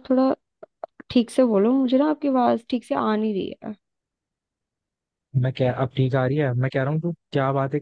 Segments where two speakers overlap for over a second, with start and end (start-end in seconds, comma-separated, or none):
none